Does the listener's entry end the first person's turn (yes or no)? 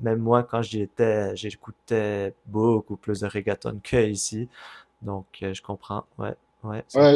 yes